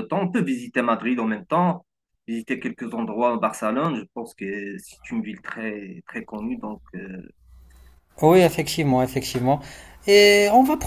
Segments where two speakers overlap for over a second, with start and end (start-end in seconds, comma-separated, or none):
none